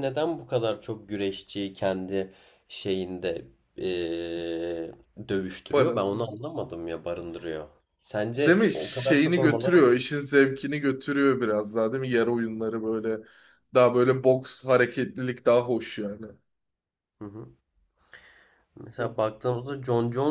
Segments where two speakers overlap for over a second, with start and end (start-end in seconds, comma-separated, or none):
8.4-9.8